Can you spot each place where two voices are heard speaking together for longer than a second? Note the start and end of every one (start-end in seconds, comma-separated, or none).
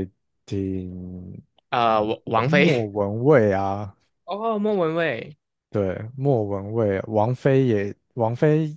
none